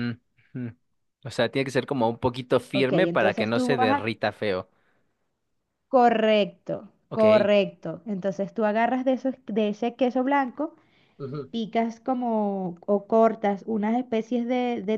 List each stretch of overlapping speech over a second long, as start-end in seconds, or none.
2.7-4.1